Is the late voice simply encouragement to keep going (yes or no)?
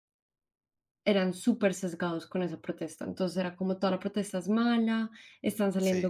yes